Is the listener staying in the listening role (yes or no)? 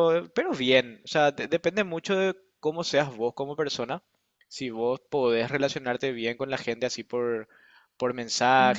yes